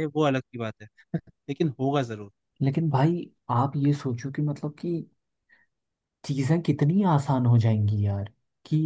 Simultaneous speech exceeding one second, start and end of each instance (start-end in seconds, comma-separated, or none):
none